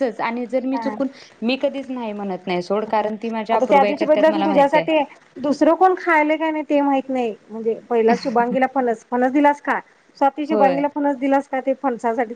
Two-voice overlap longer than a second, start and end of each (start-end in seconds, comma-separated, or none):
3.5-4.9